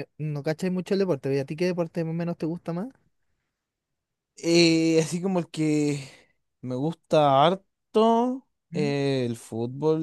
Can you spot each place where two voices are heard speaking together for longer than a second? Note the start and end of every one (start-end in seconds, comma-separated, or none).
none